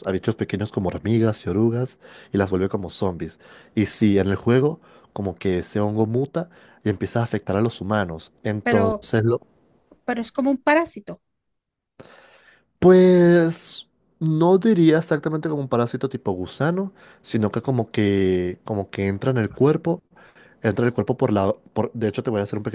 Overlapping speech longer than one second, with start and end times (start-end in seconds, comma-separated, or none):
none